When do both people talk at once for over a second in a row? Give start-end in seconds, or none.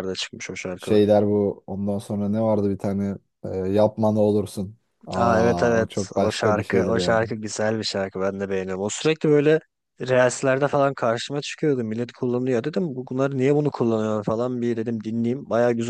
5.2-7.2